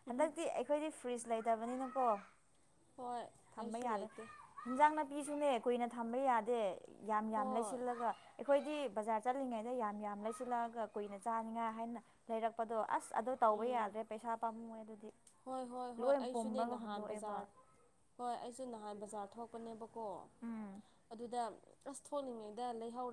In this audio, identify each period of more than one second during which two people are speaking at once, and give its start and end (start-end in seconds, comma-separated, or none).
16.0-17.5